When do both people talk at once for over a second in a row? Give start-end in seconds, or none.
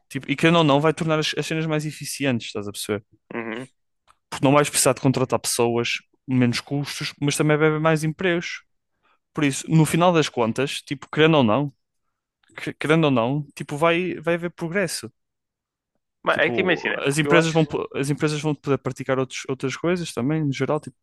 16.3-17.7